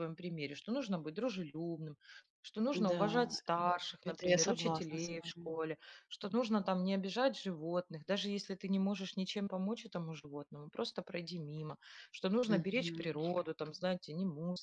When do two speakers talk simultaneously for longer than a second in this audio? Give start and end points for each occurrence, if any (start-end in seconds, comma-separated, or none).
4.0-5.5